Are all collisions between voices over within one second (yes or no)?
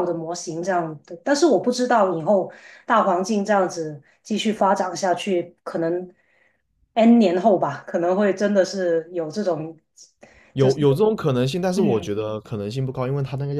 yes